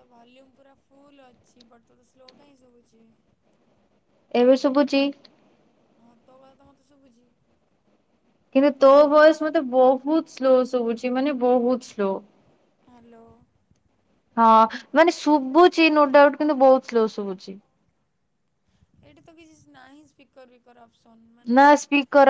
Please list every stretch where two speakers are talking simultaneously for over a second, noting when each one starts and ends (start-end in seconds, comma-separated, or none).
none